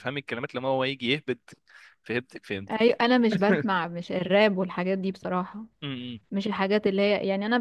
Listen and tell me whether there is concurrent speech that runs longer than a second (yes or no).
no